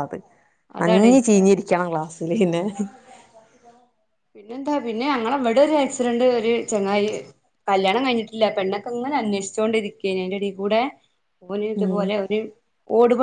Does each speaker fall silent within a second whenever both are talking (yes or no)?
yes